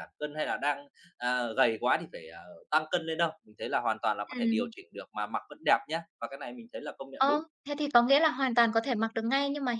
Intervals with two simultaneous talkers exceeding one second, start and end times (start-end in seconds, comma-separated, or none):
none